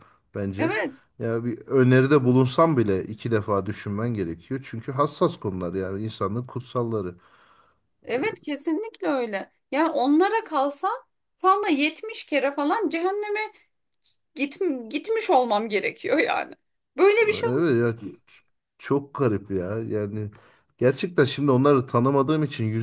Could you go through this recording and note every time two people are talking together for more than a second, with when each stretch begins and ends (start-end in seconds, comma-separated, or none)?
none